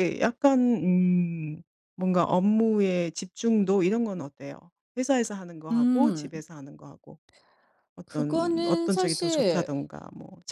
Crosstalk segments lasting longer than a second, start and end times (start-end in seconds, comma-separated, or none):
8.1-9.7